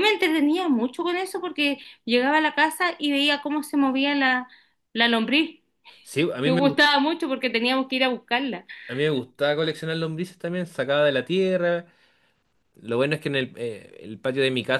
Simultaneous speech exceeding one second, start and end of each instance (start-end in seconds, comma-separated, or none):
none